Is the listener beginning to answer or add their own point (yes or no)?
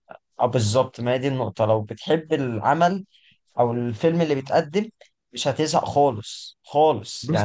no